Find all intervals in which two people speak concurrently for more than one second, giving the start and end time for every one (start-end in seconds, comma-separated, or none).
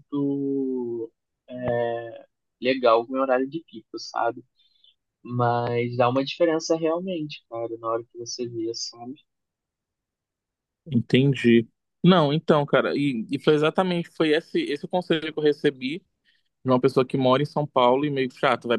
none